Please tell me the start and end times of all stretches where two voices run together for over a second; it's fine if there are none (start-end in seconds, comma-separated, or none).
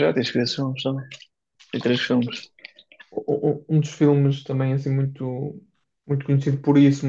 none